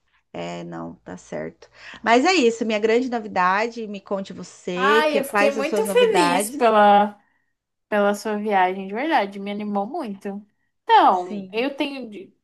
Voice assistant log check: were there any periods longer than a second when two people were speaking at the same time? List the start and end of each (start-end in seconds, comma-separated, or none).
4.7-6.7